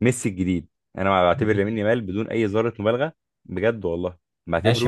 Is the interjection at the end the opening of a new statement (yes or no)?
yes